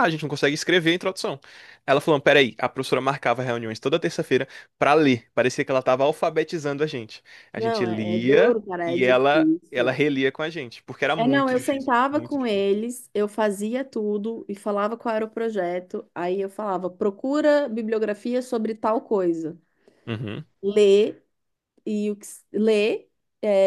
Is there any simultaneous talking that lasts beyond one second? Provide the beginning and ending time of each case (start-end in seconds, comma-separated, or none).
7.6-10.0, 11.2-12.6